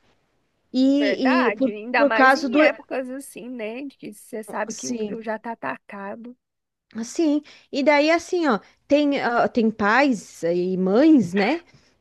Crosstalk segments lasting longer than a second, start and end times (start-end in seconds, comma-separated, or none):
1.0-2.6